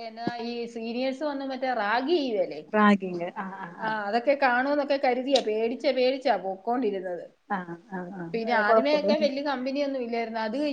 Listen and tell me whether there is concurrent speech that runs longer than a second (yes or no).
no